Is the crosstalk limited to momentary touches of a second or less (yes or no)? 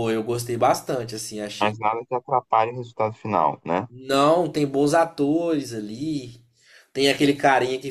yes